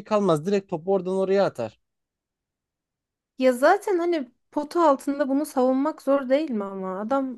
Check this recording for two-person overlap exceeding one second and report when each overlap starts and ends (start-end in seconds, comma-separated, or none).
none